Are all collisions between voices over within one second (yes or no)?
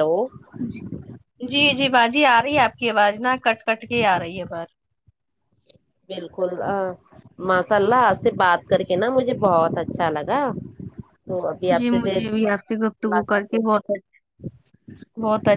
no